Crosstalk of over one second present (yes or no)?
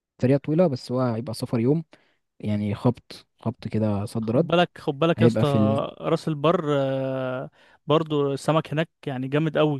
no